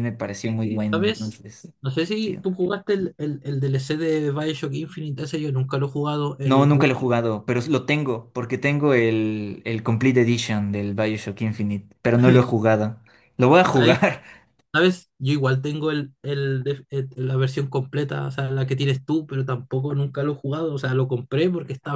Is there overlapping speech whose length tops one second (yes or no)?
no